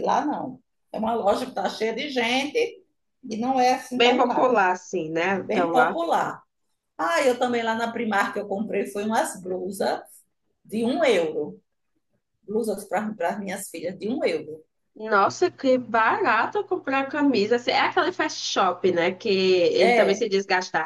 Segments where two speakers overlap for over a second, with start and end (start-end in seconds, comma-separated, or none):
none